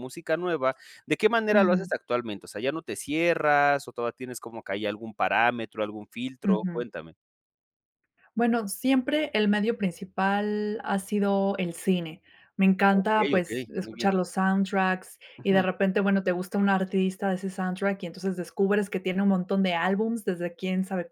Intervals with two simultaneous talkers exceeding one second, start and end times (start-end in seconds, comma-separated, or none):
12.9-14.1